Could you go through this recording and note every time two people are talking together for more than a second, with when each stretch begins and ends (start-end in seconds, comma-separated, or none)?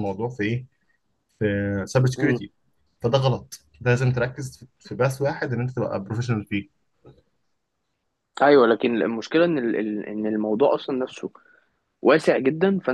none